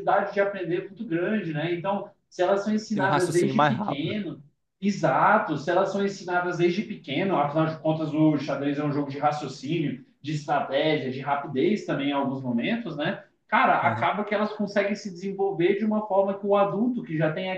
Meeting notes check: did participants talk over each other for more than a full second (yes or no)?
yes